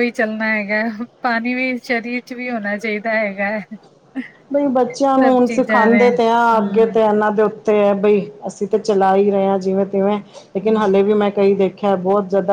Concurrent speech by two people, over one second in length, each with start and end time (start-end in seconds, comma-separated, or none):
5.2-7.0